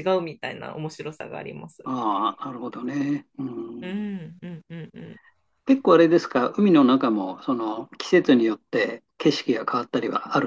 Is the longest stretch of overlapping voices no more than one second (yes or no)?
yes